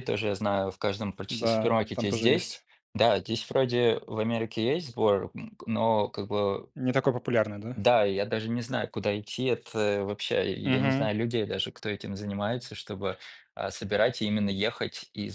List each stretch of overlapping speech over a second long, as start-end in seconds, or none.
1.3-2.6